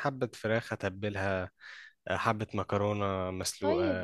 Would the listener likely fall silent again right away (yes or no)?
no